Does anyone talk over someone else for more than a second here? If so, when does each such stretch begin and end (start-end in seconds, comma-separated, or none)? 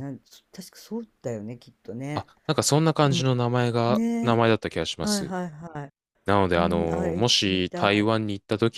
6.6-8.1